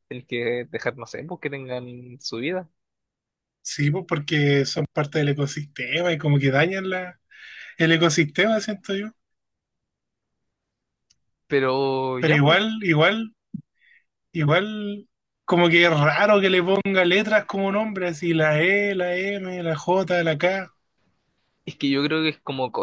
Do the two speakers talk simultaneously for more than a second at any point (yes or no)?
no